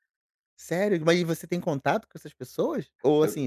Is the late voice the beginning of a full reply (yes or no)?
no